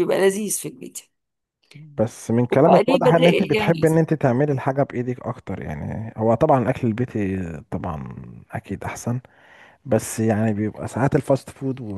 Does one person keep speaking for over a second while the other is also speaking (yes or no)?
yes